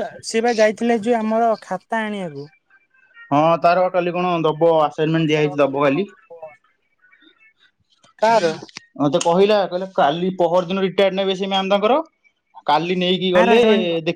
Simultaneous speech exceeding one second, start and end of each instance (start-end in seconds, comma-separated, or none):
none